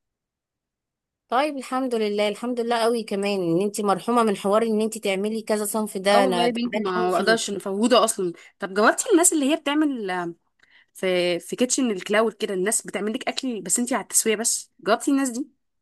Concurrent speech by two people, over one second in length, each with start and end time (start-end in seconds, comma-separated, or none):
6.1-7.5